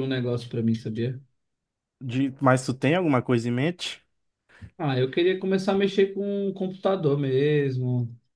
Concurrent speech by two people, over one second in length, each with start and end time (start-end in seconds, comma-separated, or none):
none